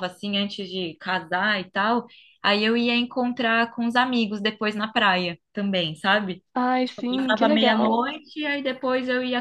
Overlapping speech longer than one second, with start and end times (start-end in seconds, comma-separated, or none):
6.8-8.1